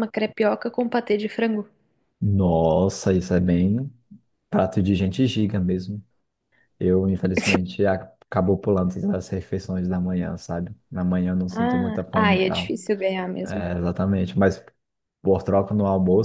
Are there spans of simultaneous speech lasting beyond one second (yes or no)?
yes